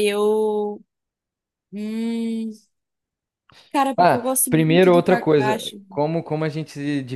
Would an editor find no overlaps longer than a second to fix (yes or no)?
no